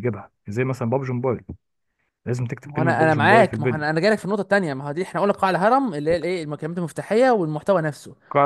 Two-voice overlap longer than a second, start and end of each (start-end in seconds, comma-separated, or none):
2.6-3.9